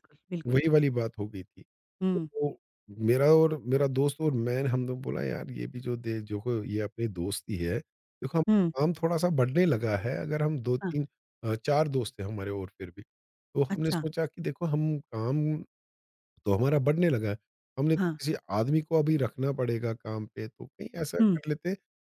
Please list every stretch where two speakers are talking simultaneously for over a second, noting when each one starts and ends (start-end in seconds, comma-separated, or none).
none